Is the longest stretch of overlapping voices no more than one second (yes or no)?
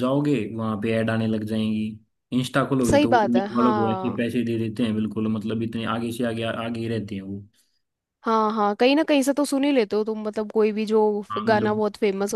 no